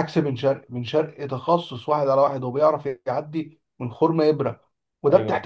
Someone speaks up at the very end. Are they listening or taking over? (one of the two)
listening